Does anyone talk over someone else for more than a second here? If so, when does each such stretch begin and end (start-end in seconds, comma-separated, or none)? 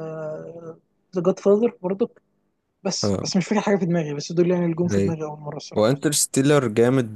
none